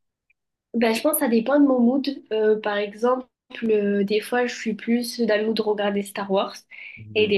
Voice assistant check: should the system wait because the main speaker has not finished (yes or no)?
yes